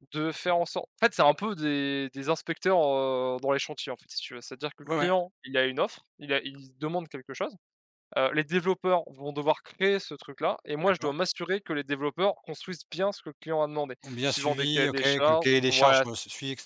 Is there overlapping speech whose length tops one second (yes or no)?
yes